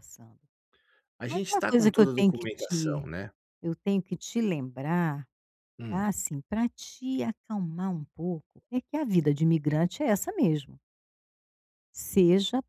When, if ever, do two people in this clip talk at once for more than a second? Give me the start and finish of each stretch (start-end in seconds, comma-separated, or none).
1.3-3.1